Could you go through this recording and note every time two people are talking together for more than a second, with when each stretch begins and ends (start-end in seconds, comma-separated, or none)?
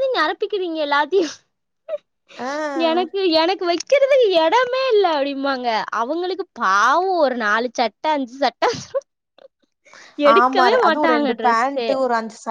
10.3-11.9